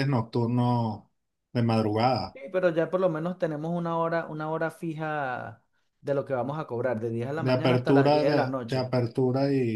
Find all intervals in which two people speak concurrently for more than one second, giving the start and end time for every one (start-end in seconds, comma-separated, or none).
7.3-8.9